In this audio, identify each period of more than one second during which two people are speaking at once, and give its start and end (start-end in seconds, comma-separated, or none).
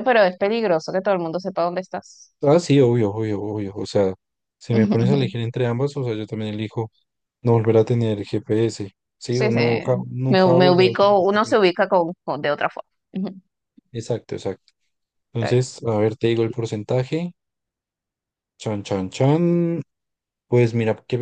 10.3-11.6